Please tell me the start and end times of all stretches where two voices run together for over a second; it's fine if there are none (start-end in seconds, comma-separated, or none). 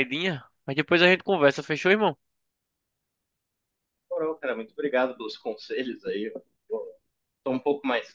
none